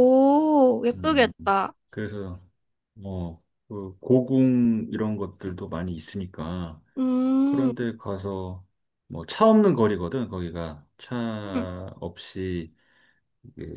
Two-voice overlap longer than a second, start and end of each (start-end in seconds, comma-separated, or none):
none